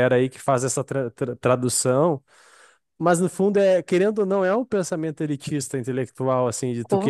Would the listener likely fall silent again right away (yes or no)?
yes